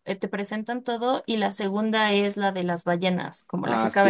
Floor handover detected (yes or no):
yes